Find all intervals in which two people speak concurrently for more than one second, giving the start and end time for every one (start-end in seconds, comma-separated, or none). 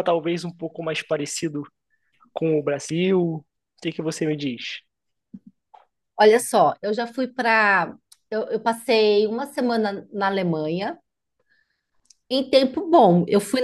none